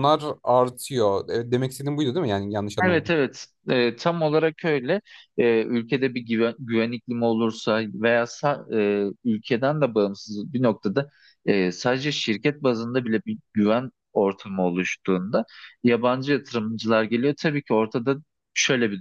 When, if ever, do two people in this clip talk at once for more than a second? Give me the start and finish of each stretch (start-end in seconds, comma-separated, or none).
none